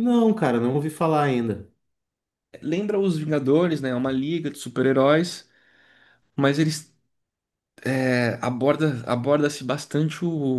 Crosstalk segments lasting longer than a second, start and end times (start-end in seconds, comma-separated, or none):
none